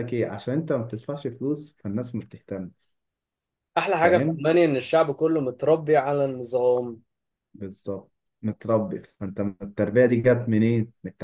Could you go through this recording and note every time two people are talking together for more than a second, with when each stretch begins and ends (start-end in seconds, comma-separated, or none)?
none